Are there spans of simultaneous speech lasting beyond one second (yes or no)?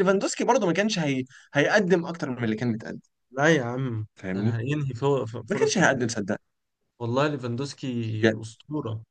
no